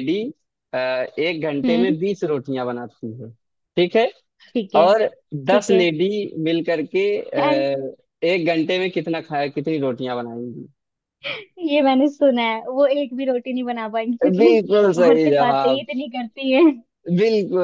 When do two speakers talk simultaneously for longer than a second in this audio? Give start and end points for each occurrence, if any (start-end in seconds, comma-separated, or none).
14.4-15.8